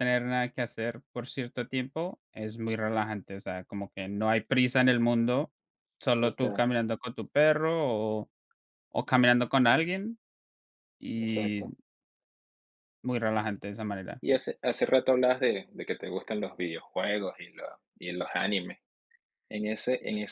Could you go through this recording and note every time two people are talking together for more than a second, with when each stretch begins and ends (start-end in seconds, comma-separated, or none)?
none